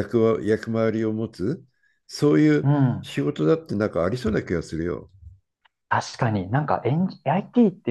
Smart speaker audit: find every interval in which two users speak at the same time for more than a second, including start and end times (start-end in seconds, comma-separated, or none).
none